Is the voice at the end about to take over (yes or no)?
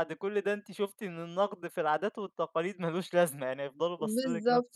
yes